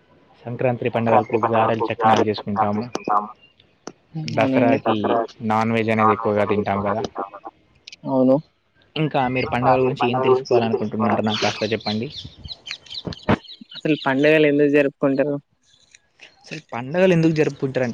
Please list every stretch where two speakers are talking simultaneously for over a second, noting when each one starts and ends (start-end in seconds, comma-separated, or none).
0.9-2.9